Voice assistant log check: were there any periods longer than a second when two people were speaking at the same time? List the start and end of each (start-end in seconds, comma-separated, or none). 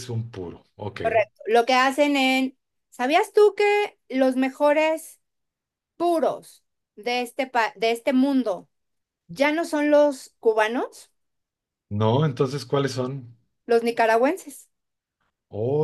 none